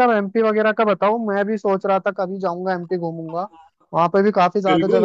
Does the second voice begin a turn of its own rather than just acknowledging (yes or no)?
yes